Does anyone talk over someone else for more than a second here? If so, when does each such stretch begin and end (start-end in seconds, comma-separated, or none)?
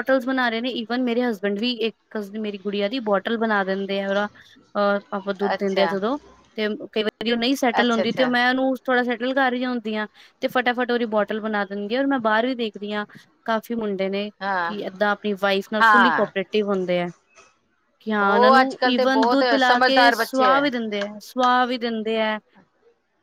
18.2-20.5